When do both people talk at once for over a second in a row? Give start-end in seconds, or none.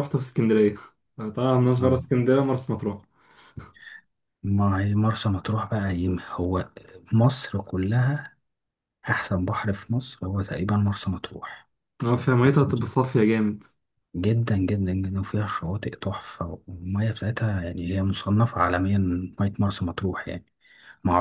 none